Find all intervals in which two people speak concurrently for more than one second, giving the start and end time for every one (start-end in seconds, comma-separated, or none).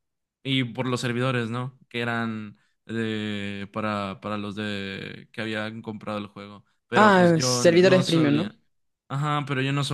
7.0-8.5